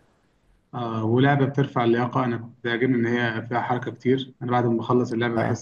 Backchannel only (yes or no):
yes